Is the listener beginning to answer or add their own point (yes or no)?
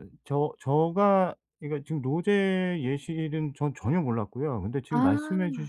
no